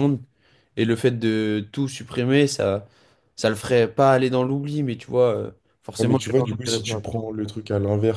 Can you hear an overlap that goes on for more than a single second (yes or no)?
yes